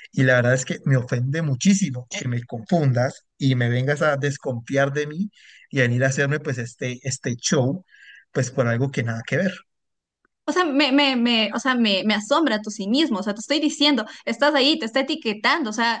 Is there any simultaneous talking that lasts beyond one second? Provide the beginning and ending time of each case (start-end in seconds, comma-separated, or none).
none